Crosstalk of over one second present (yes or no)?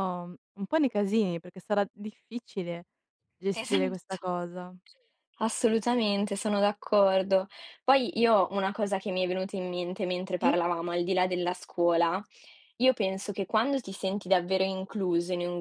no